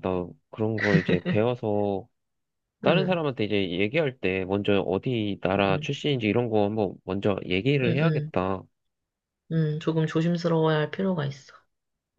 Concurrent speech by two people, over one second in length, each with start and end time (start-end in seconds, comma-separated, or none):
none